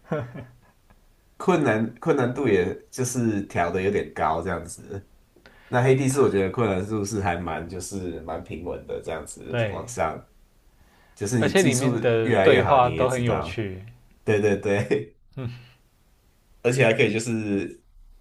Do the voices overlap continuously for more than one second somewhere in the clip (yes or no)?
yes